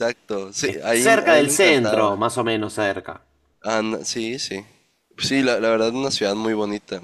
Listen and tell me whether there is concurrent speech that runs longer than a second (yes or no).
yes